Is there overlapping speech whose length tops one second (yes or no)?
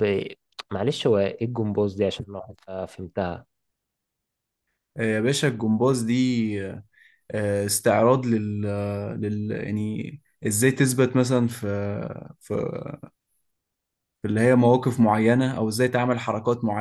no